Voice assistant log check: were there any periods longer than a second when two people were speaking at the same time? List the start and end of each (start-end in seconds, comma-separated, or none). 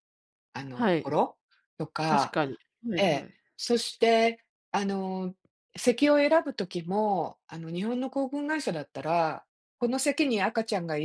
none